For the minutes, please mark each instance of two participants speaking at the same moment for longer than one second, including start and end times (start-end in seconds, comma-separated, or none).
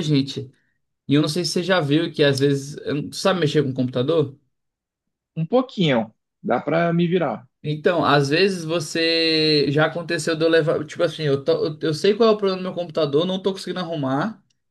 none